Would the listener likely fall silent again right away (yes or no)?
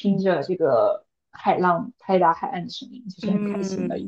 no